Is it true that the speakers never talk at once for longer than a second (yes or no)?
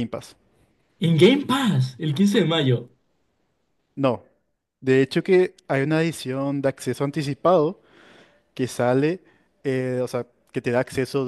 yes